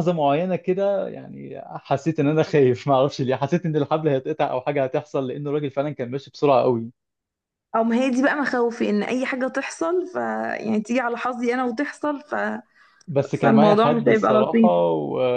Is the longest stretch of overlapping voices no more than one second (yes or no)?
no